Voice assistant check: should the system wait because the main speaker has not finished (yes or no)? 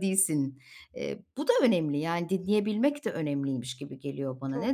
no